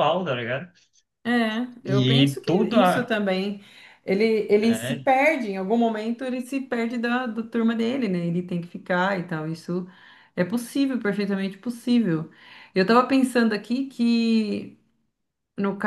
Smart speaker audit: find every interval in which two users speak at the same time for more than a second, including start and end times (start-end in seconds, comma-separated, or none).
1.8-3.1